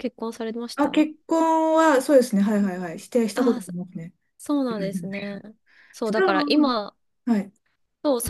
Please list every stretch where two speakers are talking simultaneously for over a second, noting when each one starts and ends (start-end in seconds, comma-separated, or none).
none